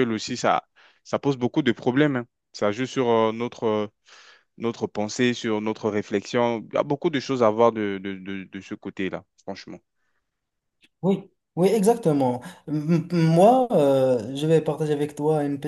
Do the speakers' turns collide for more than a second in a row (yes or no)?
no